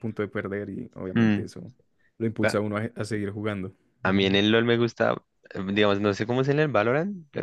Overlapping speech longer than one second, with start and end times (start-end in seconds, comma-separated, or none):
none